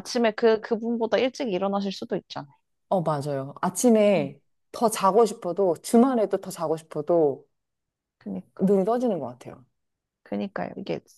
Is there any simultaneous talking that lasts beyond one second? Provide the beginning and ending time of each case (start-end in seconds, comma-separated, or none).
none